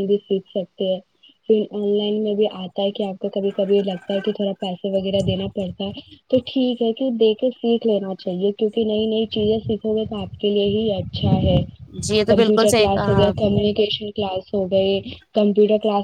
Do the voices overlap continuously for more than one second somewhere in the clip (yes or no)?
yes